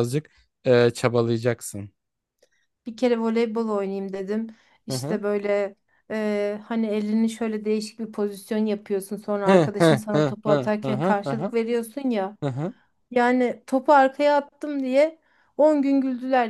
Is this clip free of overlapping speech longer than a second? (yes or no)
no